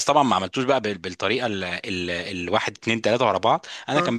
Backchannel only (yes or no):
yes